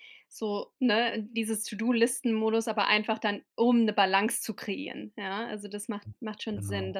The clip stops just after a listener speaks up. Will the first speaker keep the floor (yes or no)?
yes